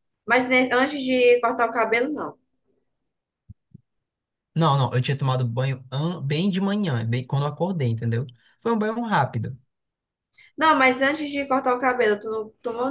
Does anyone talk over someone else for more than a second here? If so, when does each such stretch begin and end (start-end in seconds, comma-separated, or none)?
none